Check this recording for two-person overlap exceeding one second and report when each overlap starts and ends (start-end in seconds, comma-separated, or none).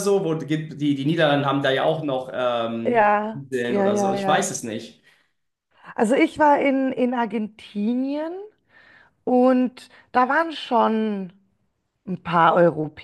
2.8-4.5